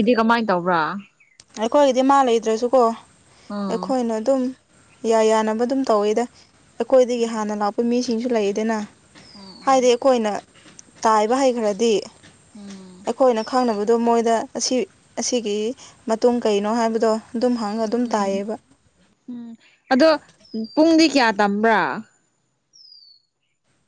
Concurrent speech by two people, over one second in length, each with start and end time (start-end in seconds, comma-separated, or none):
none